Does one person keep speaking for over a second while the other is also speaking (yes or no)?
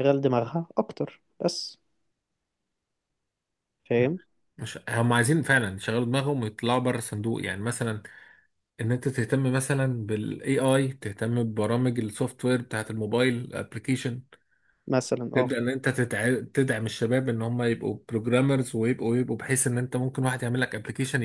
no